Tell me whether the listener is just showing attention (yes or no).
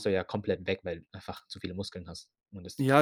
no